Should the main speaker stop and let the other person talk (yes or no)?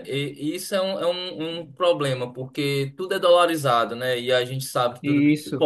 no